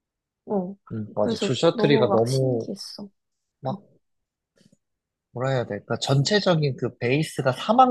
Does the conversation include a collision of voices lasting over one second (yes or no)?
yes